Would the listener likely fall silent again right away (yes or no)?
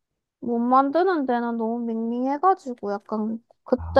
yes